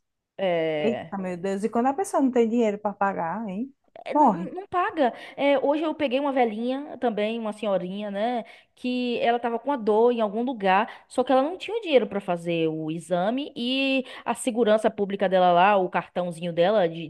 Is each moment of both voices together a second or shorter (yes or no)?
yes